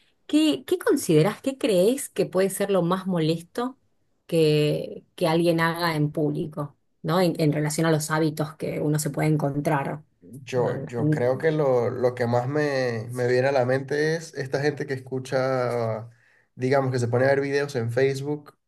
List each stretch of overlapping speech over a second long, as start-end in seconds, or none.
none